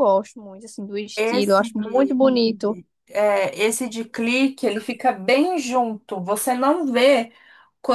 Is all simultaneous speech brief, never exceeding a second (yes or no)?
yes